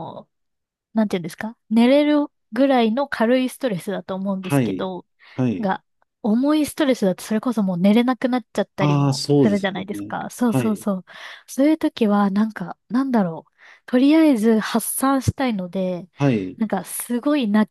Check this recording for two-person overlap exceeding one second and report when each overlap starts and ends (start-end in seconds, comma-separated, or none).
8.8-10.9